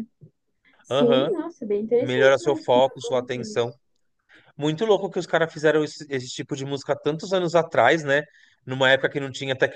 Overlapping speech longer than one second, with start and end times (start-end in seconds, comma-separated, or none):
2.0-3.7